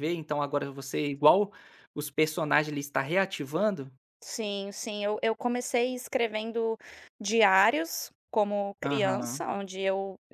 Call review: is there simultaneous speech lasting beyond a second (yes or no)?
no